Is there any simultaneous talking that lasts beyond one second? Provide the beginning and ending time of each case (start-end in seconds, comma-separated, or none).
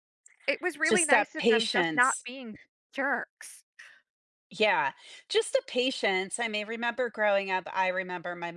0.9-2.3